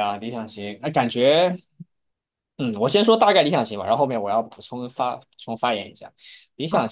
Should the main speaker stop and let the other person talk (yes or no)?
no